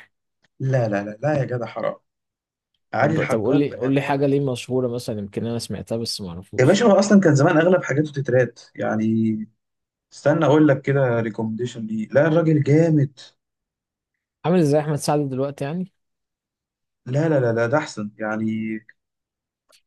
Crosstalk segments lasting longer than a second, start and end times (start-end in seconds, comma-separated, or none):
3.0-4.4